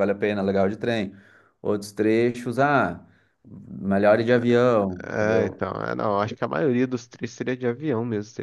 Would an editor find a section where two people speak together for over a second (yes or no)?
no